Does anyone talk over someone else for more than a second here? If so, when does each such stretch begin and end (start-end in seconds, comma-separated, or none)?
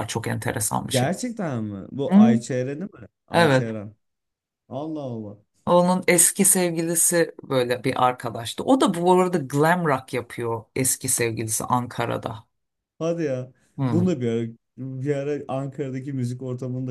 none